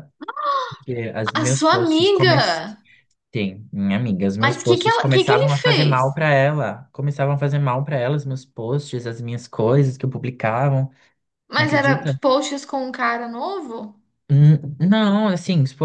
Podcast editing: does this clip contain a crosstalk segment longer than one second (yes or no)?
yes